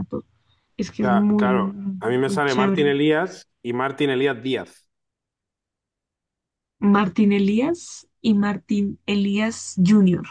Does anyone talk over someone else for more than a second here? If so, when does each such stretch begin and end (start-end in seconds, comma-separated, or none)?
1.0-3.0